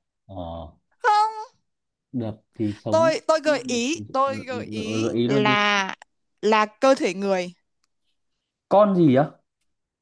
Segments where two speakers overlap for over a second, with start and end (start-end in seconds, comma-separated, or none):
2.9-5.5